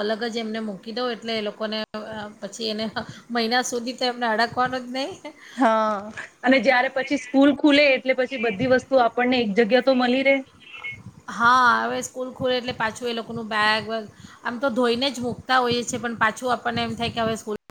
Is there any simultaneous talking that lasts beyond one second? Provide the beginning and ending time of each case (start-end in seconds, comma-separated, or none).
none